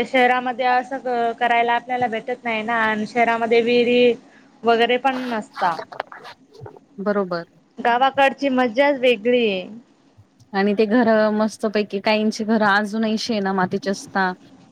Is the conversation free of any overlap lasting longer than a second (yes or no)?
yes